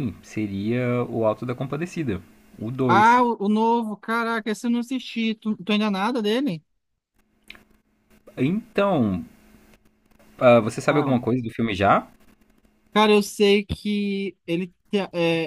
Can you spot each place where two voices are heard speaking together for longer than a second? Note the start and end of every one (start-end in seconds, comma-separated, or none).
none